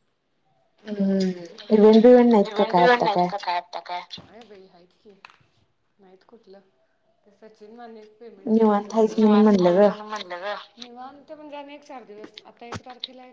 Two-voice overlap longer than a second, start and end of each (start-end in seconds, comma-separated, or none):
8.5-9.9